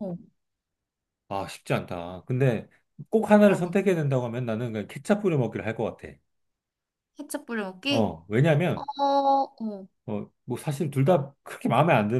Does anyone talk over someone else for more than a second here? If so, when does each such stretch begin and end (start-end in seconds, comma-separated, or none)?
none